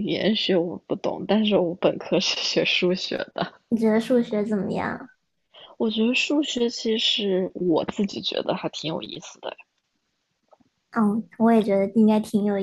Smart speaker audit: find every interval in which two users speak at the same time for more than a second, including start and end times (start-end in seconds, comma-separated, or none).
none